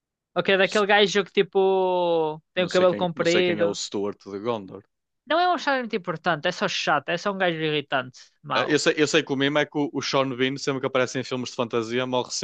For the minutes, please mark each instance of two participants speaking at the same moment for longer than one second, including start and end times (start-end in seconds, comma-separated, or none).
2.5-3.8